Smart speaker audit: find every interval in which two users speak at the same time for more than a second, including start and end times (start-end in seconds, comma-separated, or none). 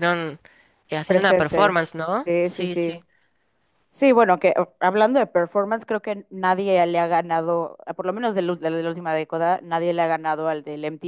1.1-2.9